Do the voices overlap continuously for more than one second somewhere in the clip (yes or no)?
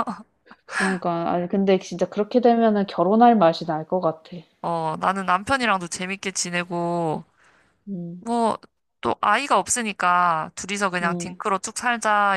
no